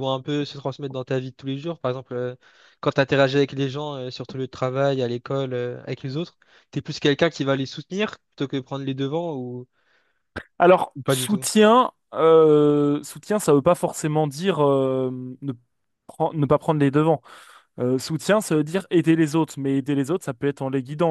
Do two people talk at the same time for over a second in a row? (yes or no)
no